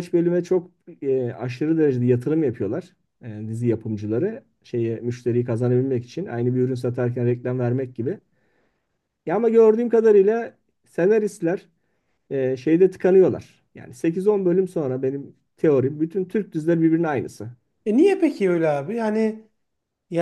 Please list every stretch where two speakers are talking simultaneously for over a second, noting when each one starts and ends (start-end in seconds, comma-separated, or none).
none